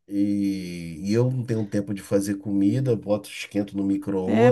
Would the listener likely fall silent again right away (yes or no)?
no